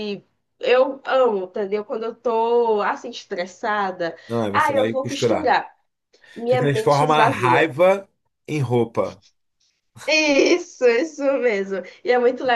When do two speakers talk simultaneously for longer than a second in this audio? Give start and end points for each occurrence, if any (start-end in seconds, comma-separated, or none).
4.3-5.5, 6.5-7.7